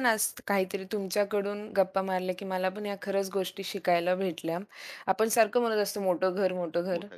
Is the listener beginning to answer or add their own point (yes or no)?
no